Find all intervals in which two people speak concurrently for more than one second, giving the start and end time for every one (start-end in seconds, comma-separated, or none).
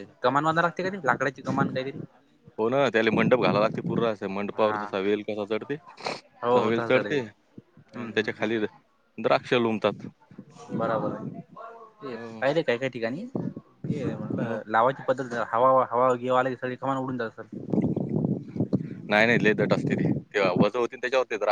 6.5-8.6